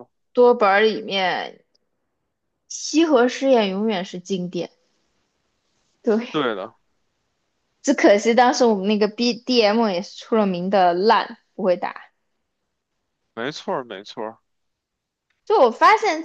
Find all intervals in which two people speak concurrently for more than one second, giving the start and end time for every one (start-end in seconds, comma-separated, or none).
none